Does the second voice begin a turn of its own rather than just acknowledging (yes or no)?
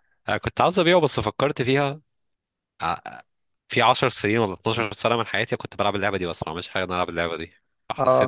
yes